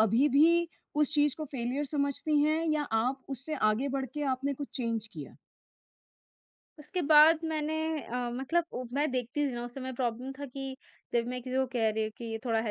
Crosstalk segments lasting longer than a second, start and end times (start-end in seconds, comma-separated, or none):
none